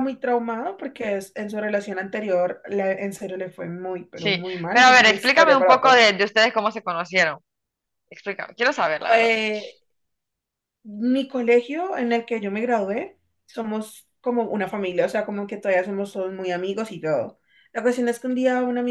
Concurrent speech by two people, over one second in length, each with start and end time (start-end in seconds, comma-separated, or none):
4.1-6.1